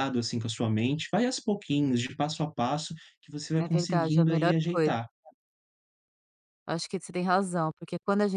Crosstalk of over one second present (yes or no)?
yes